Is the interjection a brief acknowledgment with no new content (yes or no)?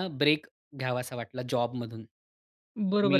no